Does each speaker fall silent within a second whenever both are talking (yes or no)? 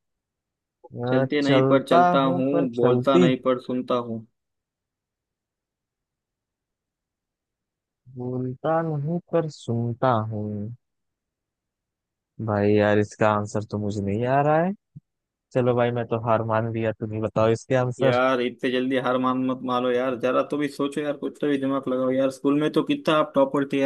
no